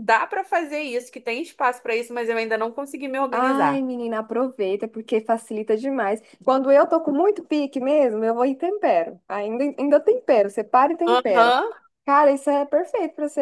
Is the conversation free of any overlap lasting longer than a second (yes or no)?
yes